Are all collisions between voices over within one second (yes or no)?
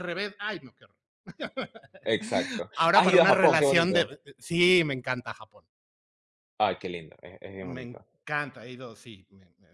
no